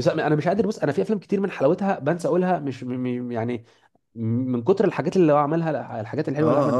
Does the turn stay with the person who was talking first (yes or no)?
no